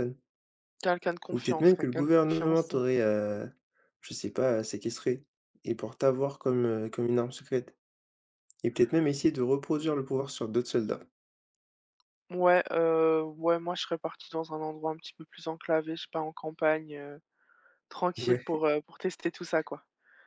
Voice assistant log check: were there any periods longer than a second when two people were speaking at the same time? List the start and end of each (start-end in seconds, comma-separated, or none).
1.3-2.7